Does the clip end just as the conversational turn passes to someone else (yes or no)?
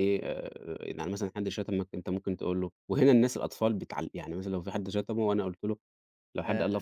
no